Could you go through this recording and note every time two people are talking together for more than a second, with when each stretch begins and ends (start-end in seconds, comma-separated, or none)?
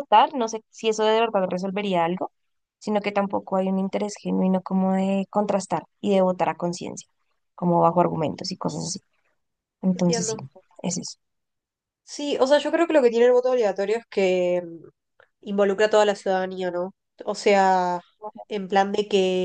none